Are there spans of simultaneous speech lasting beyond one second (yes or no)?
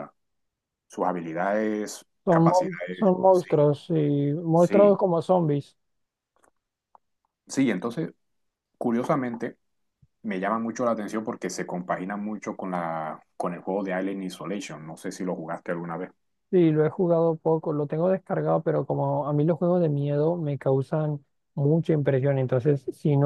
yes